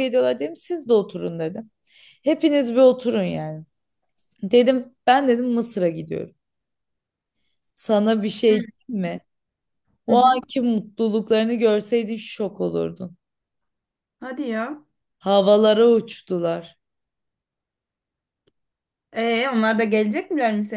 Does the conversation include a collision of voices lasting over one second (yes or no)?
no